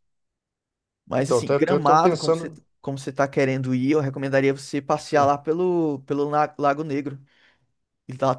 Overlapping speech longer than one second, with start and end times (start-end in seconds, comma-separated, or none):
1.2-2.6